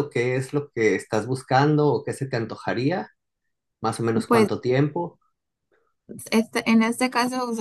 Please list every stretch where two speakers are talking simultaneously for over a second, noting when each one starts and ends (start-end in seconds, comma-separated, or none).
none